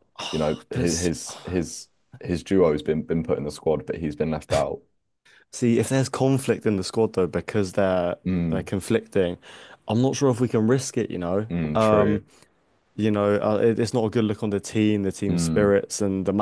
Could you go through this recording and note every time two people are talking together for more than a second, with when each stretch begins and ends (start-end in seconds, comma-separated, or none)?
none